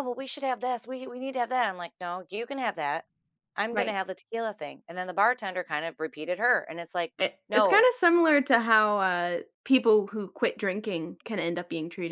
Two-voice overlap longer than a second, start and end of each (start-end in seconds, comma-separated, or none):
none